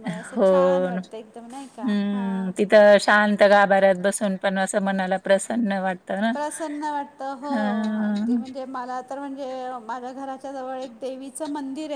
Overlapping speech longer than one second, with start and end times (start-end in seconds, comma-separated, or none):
none